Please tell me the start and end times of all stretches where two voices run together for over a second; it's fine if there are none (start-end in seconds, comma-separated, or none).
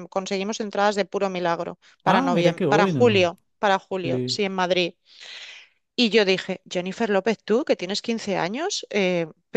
2.0-3.3